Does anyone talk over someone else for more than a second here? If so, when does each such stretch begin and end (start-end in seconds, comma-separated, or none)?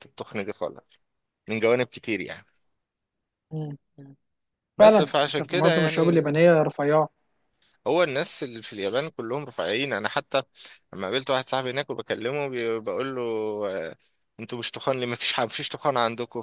4.8-6.2